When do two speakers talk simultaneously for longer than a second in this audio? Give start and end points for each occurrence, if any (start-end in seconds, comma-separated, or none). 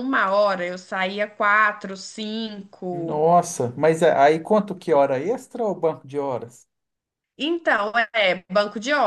none